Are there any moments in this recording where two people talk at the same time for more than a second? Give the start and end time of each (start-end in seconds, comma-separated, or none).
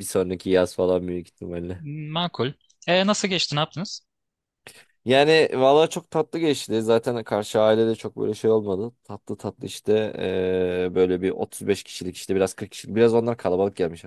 none